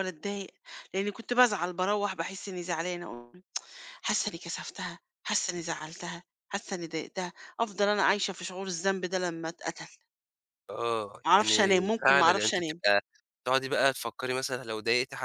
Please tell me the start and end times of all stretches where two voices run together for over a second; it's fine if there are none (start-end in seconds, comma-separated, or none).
11.3-12.8